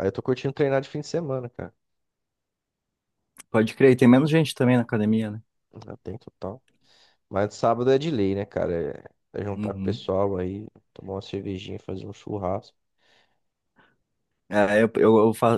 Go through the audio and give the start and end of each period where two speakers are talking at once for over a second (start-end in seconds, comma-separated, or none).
none